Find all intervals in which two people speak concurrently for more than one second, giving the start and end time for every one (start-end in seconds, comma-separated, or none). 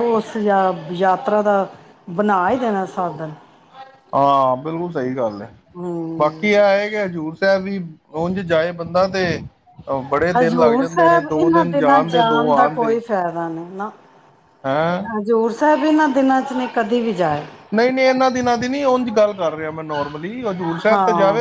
10.4-13.0